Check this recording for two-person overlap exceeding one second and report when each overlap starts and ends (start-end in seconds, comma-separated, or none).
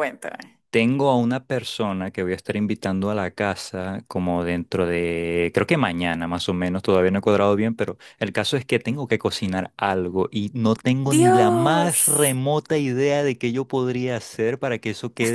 11.0-12.4